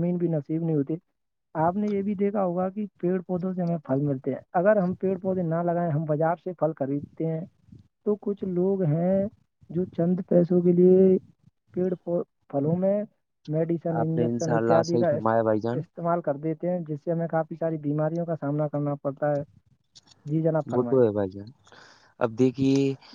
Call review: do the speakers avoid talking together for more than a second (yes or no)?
no